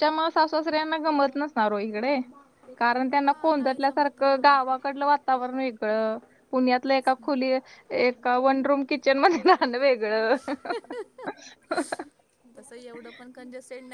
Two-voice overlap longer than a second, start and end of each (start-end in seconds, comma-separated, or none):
3.2-4.7